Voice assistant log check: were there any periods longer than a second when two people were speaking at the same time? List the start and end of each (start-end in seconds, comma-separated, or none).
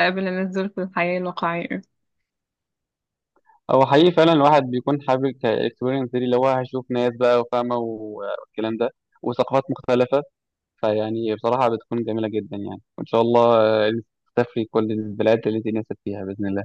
none